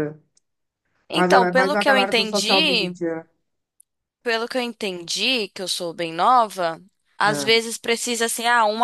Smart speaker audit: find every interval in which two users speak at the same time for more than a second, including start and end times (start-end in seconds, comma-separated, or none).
1.1-3.0